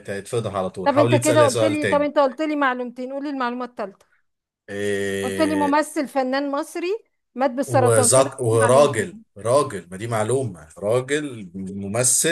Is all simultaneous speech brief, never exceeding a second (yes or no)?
no